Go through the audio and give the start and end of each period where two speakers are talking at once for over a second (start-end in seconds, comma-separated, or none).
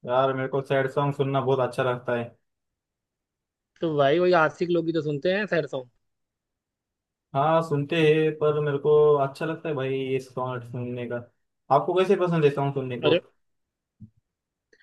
none